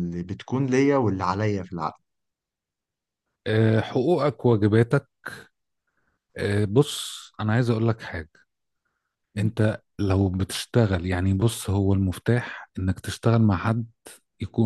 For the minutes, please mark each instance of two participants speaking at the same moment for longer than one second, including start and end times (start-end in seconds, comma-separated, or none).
none